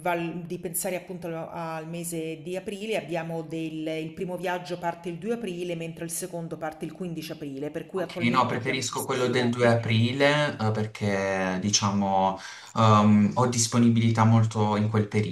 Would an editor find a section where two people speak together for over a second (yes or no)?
yes